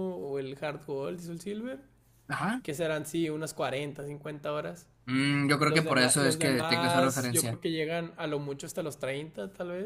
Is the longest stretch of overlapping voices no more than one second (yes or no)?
no